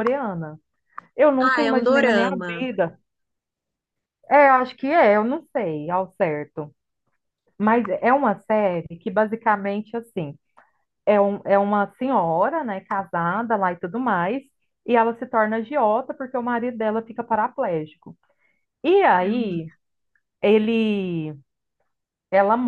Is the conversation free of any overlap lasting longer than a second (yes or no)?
no